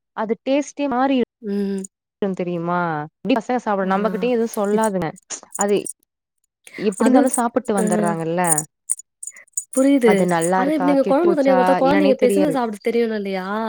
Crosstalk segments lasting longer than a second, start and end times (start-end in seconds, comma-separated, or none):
10.7-12.6